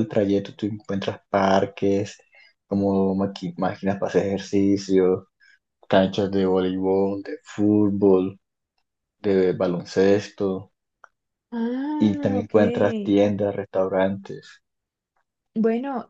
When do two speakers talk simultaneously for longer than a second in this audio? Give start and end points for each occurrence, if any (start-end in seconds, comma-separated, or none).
12.0-13.2